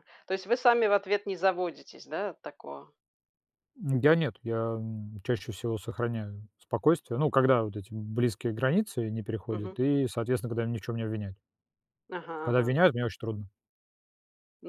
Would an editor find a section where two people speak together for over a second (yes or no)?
no